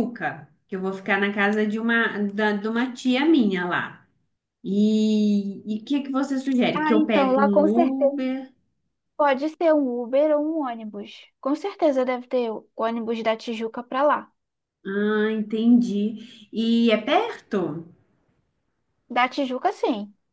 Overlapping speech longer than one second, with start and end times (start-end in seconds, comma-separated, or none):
6.8-8.1